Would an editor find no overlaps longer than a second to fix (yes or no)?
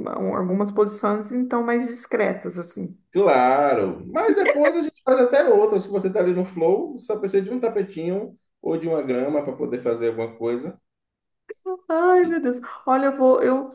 yes